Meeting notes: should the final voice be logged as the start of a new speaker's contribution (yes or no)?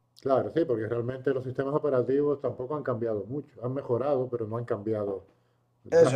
yes